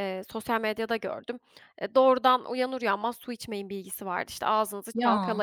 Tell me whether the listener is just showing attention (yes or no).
yes